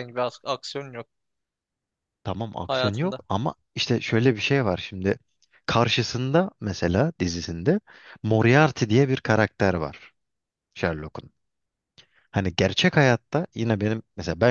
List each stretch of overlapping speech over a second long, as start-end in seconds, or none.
none